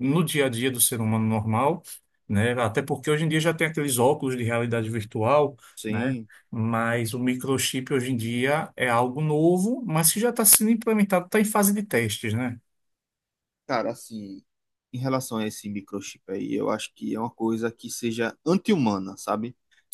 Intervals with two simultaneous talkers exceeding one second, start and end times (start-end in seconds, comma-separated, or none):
none